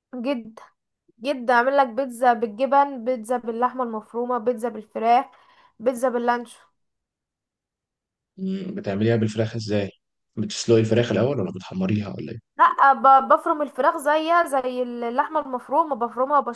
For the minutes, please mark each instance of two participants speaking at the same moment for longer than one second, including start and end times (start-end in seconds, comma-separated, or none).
none